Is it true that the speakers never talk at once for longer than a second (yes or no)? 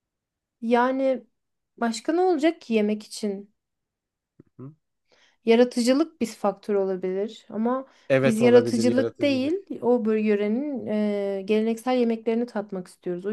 no